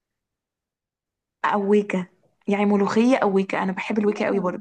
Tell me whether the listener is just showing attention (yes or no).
no